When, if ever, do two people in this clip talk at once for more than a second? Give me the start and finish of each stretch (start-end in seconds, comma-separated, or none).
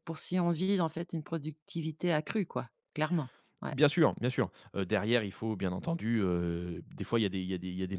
none